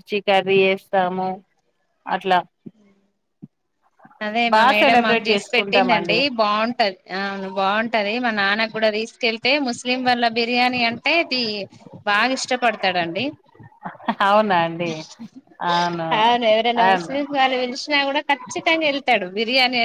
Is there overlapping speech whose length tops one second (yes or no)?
yes